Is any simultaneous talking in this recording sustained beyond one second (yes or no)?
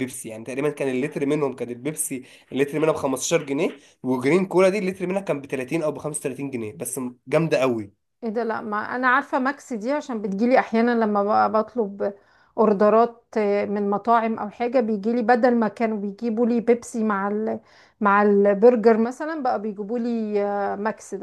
no